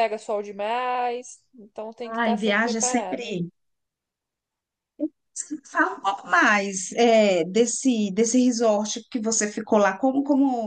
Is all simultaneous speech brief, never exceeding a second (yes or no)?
no